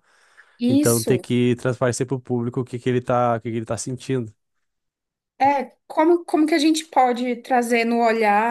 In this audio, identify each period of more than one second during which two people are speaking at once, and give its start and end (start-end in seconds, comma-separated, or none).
none